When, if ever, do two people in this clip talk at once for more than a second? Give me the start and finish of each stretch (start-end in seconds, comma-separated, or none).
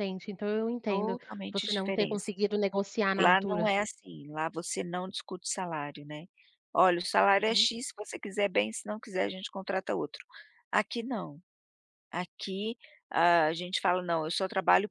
0.9-2.3